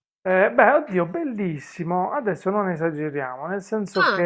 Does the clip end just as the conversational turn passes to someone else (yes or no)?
no